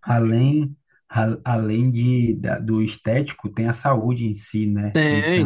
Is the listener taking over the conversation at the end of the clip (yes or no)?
yes